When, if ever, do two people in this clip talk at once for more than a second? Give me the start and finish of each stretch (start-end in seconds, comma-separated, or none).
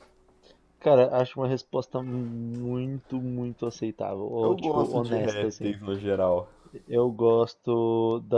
4.4-5.8